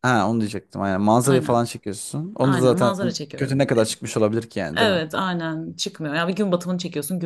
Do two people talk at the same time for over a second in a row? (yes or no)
yes